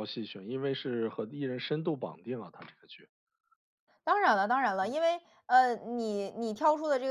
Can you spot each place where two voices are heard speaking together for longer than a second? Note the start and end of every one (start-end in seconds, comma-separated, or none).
none